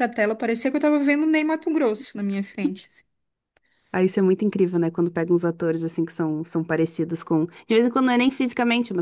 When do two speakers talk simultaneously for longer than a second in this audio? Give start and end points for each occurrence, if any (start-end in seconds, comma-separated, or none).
none